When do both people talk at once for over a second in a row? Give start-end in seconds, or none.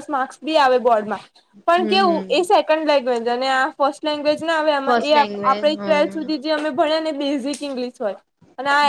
4.8-6.5